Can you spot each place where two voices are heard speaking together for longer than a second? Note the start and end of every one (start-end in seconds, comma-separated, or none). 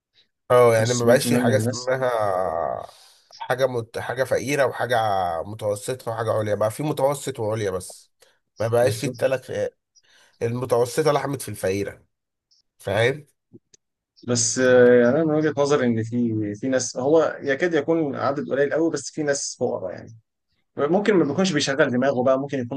0.7-1.9